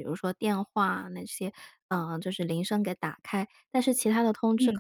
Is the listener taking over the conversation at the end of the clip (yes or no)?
no